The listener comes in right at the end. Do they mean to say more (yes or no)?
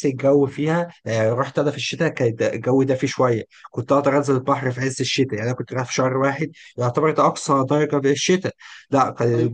no